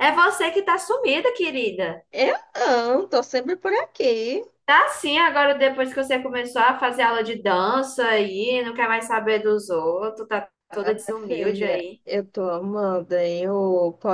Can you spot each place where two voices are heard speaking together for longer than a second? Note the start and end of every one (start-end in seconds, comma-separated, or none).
10.7-12.0